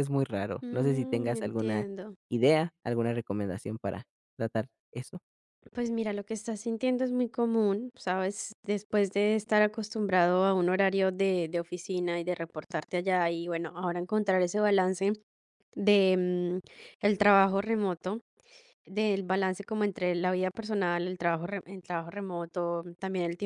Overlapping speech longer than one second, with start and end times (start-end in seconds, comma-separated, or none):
0.6-1.9